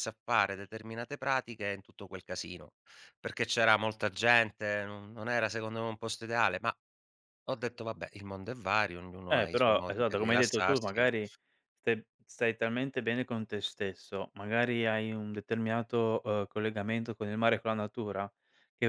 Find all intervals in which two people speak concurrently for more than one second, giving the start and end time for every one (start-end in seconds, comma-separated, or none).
9.3-11.1